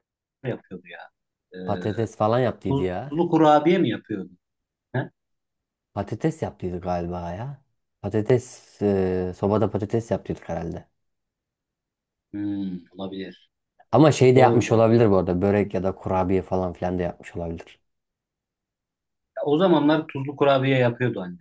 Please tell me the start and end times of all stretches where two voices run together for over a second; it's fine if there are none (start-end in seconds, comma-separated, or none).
none